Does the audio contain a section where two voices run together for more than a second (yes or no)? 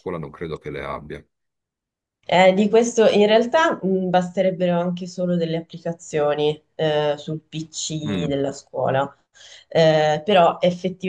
no